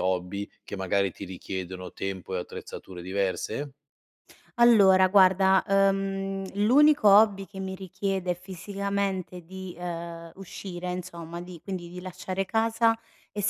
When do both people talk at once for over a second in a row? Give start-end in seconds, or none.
none